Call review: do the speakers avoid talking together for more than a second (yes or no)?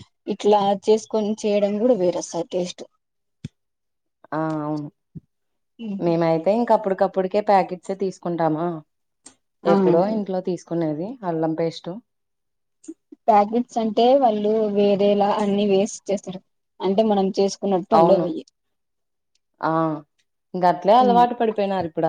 yes